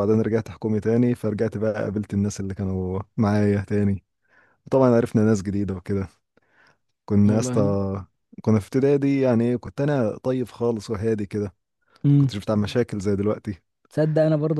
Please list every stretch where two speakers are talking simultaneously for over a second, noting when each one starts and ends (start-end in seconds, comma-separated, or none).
none